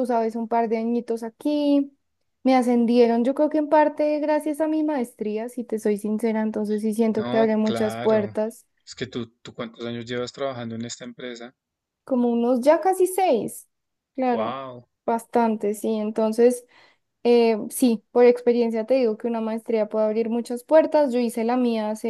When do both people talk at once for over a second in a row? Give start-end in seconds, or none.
7.1-8.4